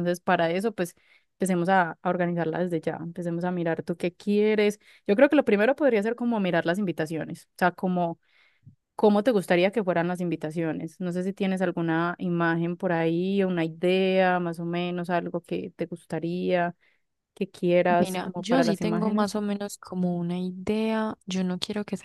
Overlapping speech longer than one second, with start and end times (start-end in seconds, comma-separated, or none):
18.0-19.4